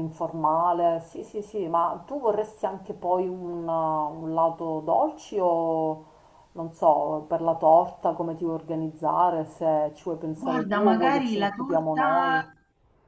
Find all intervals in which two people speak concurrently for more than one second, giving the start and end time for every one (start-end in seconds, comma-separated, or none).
10.3-12.5